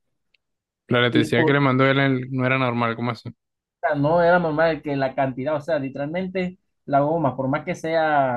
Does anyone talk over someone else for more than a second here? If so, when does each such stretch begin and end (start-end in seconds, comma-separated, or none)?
none